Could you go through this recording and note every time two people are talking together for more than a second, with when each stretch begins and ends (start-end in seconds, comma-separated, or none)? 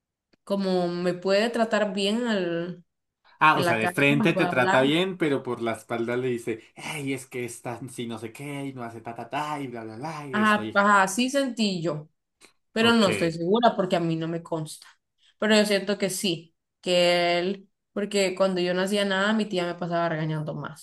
3.5-4.9